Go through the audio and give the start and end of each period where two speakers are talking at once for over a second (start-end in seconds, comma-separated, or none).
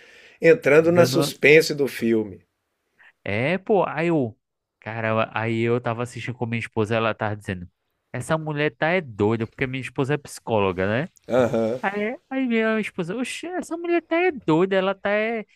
none